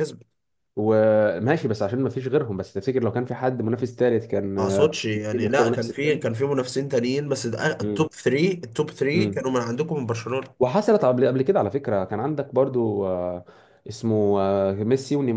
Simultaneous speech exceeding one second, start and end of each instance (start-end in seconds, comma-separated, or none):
4.4-6.2